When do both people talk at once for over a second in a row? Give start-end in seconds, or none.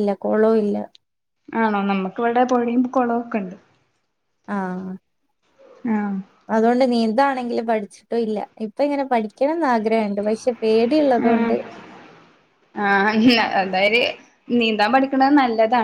none